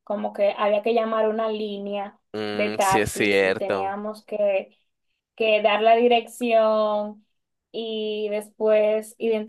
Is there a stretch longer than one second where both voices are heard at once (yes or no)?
yes